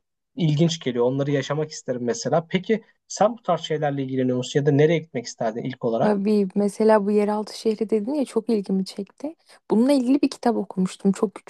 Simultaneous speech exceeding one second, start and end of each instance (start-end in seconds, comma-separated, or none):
none